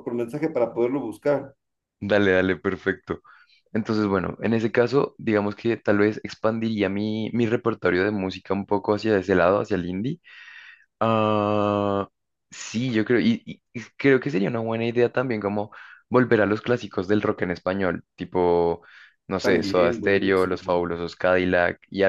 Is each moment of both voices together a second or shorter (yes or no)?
no